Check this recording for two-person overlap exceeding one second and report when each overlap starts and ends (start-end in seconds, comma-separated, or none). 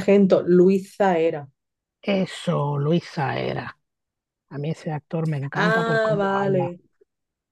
5.5-6.7